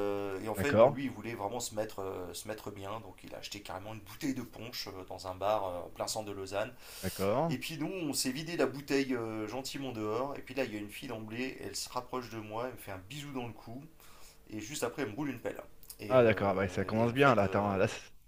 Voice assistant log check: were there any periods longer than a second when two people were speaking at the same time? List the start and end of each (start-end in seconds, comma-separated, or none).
16.1-17.8